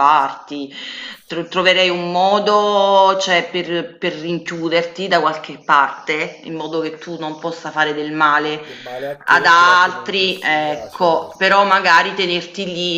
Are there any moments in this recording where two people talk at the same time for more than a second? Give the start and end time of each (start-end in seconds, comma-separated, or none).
9.2-11.7